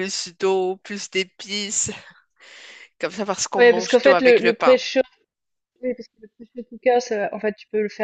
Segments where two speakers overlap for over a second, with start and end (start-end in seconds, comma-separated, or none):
3.6-4.8